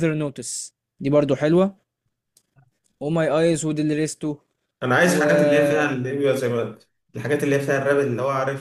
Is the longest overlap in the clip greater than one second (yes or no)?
no